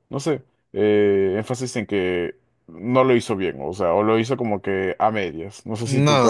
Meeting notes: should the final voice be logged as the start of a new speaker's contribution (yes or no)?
yes